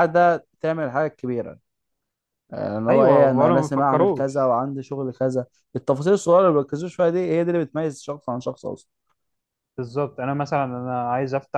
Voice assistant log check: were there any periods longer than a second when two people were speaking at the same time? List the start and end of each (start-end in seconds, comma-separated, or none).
2.9-4.5